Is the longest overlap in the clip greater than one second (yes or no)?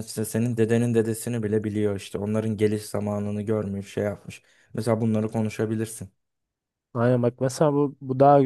no